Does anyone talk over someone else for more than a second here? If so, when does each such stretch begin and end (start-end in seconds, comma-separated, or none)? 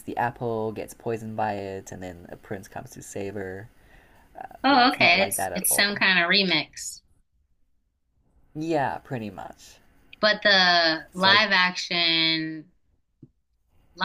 4.6-6.0